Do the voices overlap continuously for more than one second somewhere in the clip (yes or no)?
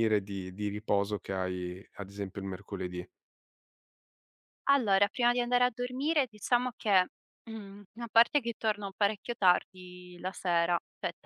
no